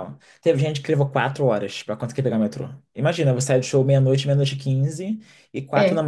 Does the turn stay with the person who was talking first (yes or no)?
yes